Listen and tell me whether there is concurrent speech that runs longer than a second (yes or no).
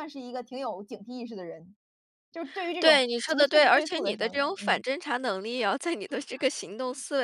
yes